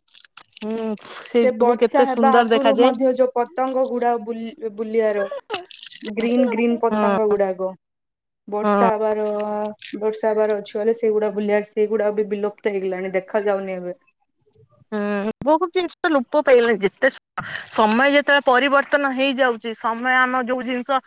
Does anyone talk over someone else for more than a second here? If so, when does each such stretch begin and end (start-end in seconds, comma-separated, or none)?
1.4-3.0